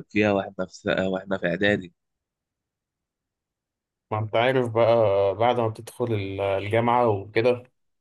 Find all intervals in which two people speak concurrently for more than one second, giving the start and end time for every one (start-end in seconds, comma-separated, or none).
none